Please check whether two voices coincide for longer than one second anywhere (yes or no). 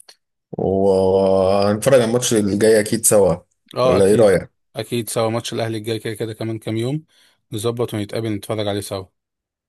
no